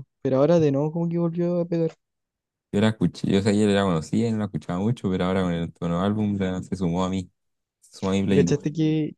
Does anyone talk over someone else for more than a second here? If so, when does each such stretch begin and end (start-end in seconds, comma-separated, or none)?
none